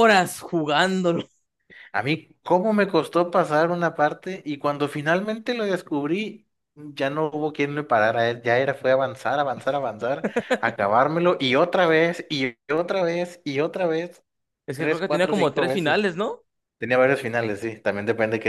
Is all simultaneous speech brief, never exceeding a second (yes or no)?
no